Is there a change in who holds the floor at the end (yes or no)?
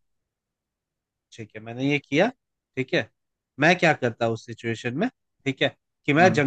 no